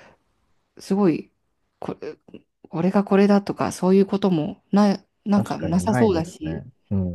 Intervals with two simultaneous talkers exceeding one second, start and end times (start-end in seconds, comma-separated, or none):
5.3-6.7